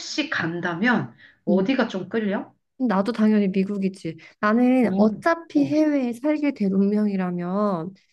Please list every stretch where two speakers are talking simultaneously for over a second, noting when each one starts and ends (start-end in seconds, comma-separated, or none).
none